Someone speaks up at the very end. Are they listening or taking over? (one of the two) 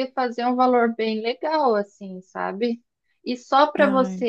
listening